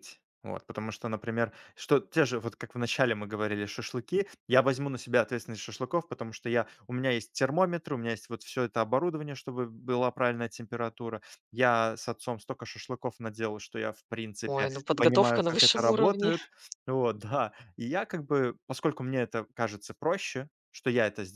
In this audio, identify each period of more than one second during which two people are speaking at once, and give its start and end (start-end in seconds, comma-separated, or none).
14.4-16.3